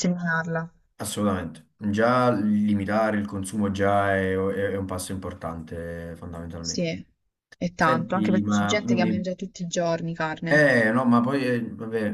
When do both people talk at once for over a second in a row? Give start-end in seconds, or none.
7.8-9.3